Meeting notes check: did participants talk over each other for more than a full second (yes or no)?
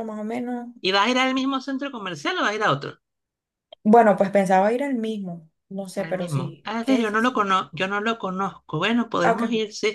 yes